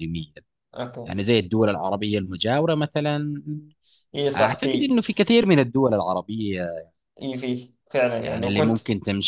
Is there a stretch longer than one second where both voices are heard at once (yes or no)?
no